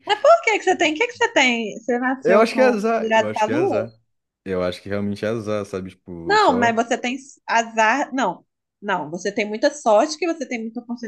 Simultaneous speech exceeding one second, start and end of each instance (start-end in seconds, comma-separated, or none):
2.2-3.9